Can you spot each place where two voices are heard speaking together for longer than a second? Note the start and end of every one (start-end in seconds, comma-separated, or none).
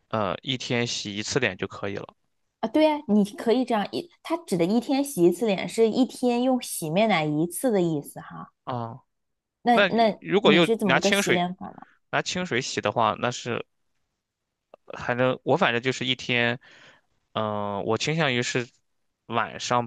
9.7-11.4